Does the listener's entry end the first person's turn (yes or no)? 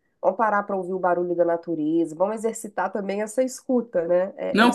yes